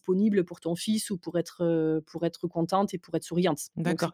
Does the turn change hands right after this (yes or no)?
yes